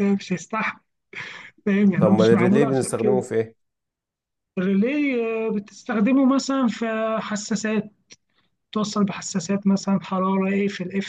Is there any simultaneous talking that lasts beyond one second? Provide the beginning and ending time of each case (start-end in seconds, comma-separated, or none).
2.0-3.3